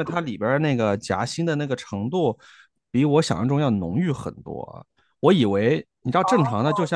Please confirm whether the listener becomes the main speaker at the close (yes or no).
no